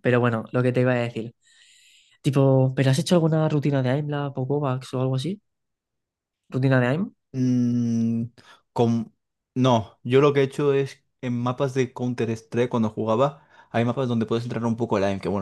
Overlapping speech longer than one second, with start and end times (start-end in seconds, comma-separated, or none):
none